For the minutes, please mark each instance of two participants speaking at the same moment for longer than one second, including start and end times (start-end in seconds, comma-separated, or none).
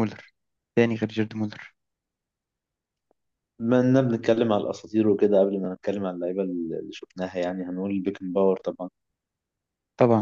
none